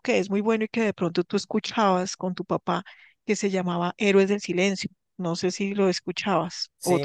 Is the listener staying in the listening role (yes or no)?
no